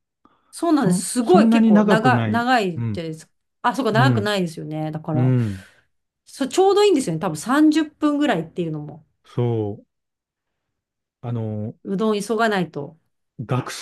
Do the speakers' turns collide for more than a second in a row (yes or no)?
yes